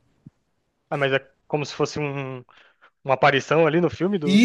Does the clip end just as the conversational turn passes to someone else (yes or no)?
yes